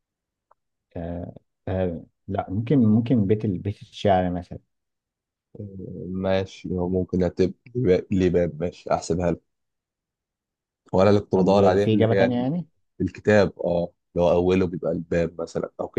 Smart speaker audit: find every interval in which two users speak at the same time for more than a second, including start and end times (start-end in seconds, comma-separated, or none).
11.3-12.6